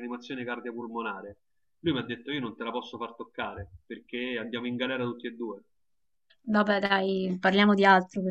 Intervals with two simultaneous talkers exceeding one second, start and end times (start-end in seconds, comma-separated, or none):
none